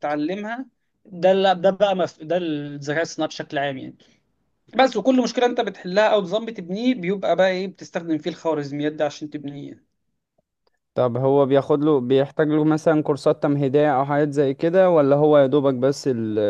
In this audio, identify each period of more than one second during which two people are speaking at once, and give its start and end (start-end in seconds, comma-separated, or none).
none